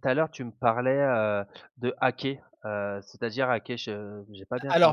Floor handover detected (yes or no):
yes